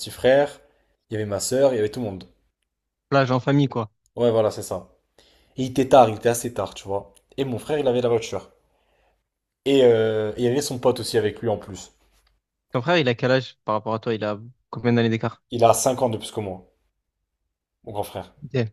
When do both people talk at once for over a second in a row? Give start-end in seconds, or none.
none